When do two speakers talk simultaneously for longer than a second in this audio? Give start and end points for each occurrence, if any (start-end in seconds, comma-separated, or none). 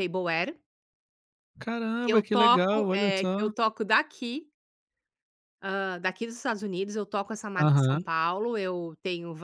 2.0-3.5